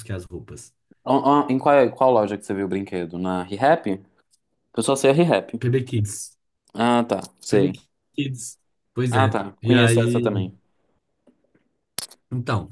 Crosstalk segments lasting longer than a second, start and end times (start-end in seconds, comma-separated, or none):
9.1-10.5